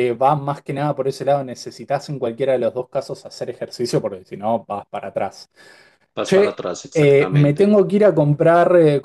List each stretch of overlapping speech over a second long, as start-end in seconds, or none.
6.2-7.8